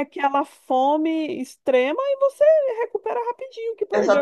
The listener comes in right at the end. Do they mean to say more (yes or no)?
yes